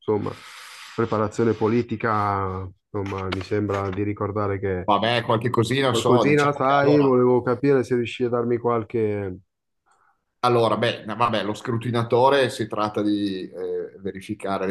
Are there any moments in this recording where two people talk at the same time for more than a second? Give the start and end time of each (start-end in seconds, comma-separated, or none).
5.9-7.2